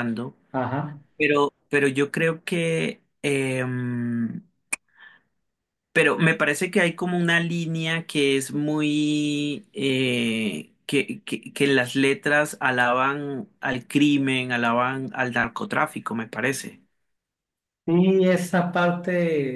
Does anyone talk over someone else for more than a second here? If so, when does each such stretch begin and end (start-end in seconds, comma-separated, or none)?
none